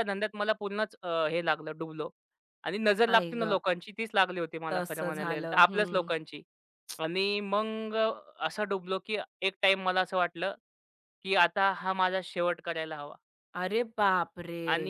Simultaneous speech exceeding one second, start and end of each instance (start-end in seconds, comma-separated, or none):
4.7-6.1